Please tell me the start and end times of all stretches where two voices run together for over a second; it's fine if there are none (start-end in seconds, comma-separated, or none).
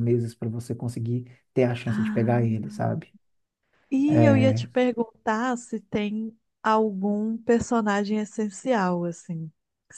none